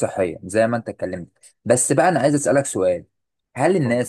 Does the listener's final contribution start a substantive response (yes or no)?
no